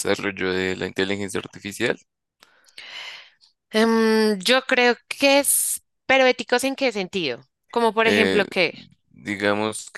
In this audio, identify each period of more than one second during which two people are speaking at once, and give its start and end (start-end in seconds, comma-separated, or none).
none